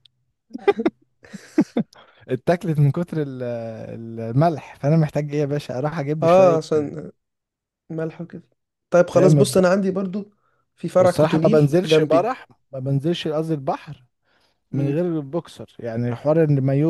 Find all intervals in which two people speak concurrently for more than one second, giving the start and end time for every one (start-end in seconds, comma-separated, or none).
11.0-12.2